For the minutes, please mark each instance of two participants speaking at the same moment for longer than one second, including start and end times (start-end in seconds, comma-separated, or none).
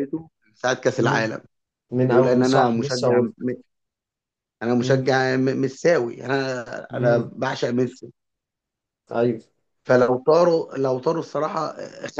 2.0-3.3